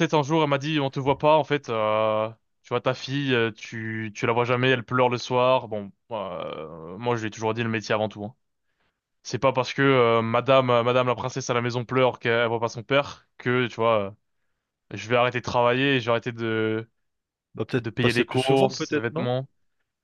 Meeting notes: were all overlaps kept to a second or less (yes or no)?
no